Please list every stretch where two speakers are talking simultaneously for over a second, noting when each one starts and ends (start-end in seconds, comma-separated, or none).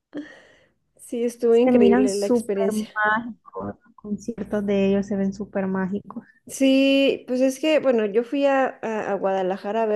1.5-2.9